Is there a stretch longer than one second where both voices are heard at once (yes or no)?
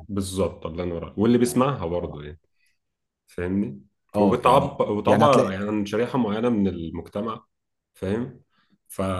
yes